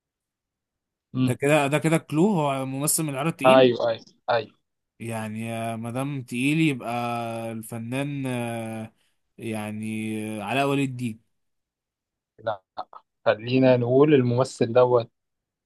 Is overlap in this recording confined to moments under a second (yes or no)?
yes